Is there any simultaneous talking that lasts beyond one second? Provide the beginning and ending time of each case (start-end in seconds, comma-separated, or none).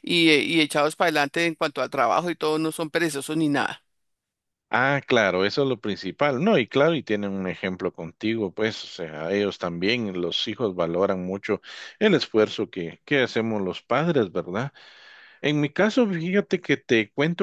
none